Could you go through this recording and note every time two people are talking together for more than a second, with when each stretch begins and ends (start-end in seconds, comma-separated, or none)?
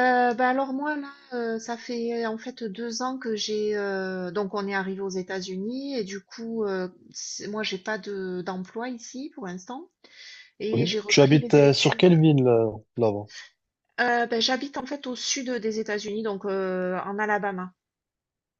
10.7-12.2